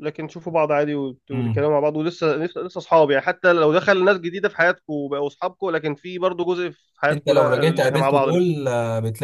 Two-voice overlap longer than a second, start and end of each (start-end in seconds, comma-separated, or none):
7.1-8.5